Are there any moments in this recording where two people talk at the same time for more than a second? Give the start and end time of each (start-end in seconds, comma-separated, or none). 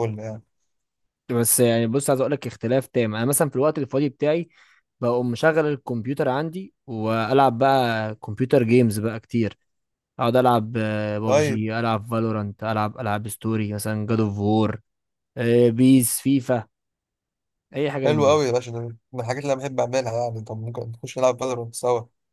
none